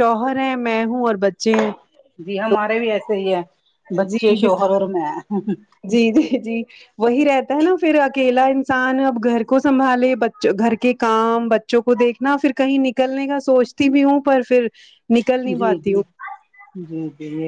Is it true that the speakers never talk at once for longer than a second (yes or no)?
yes